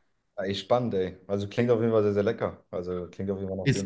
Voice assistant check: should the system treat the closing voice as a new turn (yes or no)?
yes